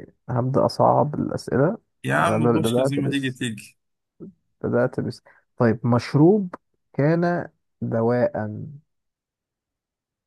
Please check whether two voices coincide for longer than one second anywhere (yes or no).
yes